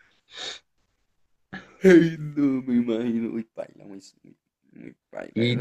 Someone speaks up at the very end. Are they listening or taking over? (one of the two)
taking over